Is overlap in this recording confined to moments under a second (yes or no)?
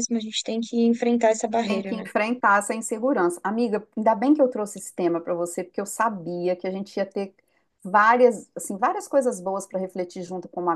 yes